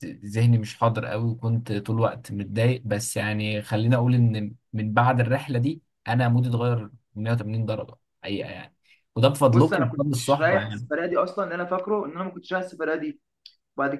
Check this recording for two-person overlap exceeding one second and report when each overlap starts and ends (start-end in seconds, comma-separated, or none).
9.5-10.9